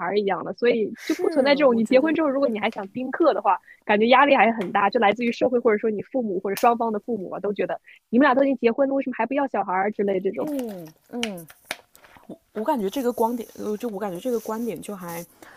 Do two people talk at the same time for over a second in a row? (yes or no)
yes